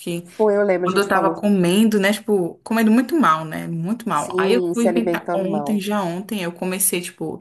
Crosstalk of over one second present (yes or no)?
yes